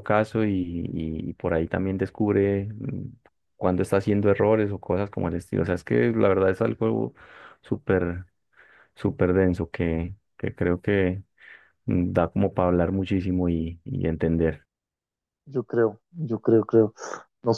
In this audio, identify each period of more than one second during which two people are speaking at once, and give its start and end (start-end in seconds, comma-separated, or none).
none